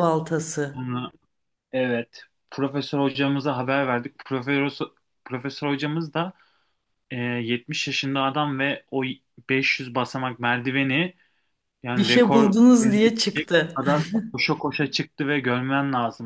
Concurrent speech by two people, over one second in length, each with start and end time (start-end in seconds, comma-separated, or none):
11.9-13.8